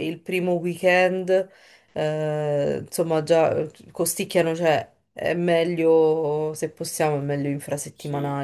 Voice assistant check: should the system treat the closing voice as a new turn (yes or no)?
yes